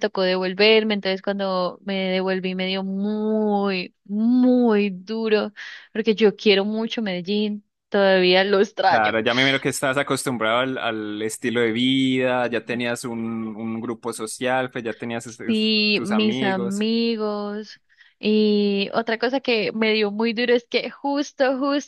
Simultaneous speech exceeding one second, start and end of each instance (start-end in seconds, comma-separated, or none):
15.5-16.9